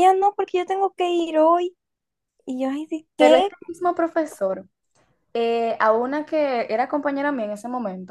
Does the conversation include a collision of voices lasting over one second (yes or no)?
no